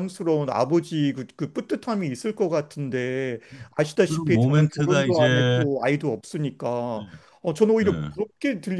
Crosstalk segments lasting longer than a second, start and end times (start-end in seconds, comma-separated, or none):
4.1-5.7